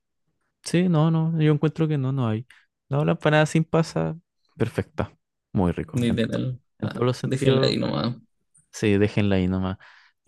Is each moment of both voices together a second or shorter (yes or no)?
no